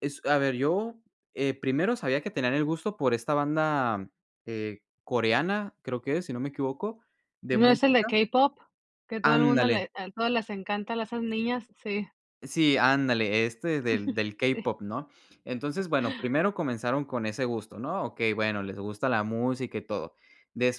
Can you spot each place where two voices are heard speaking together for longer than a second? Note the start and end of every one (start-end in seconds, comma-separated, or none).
none